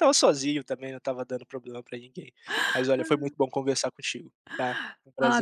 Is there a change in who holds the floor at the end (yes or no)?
yes